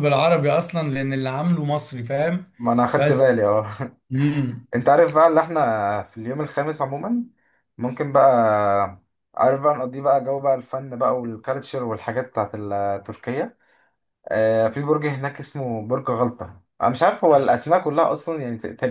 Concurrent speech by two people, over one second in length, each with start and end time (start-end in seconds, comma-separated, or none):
none